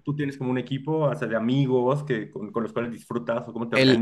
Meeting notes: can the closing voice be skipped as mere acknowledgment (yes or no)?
no